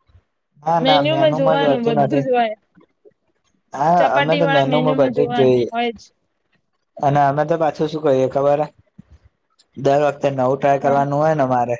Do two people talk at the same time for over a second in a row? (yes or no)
yes